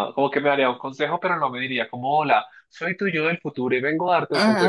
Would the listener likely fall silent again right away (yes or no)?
no